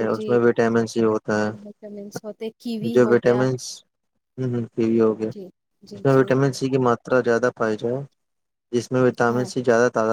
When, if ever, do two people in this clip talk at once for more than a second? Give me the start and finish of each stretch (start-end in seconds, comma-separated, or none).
1.6-3.4